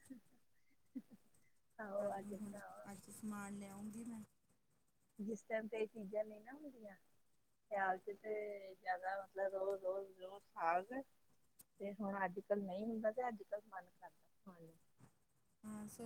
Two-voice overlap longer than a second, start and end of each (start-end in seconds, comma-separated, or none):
none